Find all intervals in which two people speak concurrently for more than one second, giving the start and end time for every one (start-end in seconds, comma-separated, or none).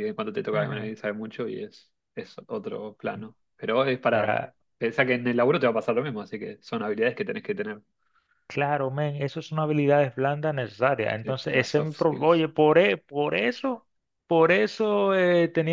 11.2-12.5